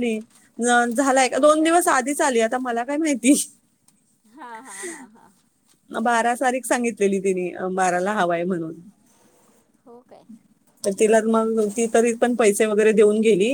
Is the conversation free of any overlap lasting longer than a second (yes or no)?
yes